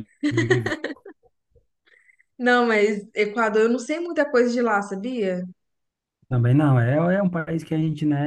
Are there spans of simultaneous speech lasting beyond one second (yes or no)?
no